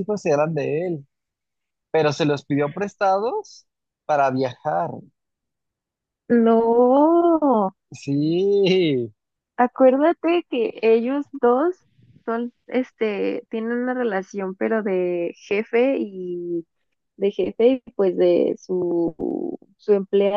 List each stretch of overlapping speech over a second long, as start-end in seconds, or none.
none